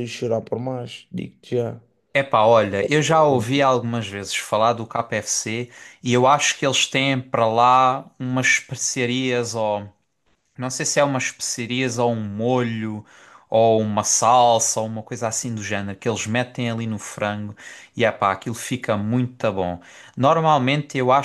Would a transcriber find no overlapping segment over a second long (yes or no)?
yes